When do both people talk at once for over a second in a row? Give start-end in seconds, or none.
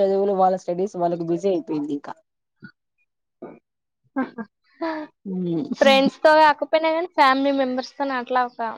none